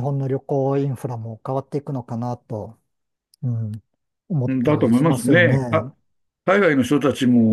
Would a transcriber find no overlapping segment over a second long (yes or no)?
no